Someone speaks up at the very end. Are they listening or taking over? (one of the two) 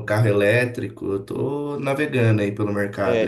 taking over